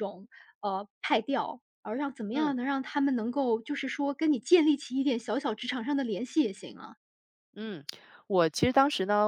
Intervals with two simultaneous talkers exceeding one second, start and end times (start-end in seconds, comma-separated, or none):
none